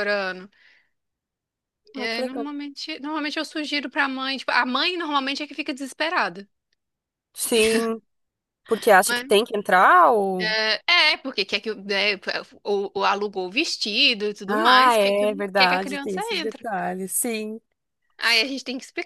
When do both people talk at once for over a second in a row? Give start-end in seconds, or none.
14.5-16.6